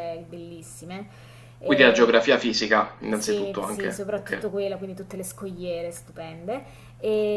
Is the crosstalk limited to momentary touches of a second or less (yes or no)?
no